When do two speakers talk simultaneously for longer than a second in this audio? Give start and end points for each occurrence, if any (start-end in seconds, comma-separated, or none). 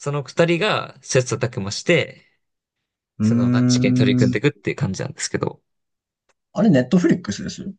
3.2-4.4